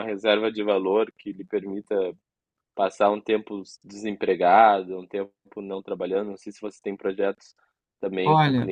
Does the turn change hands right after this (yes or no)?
yes